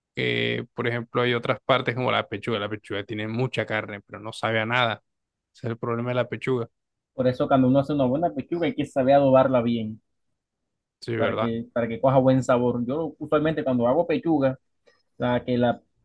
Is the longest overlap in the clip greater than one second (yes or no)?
no